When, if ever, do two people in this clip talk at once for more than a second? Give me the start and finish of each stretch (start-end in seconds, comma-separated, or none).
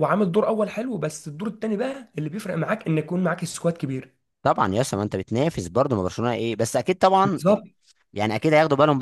none